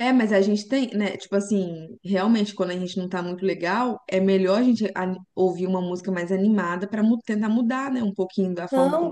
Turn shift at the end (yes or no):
yes